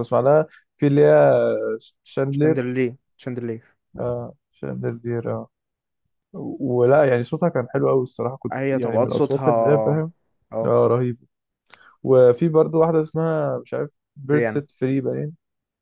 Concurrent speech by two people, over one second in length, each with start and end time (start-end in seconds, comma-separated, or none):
8.5-10.0